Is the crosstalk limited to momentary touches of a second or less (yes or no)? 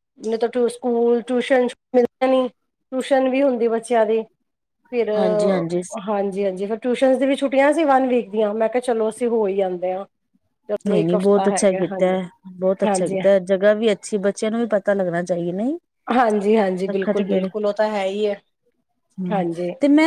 yes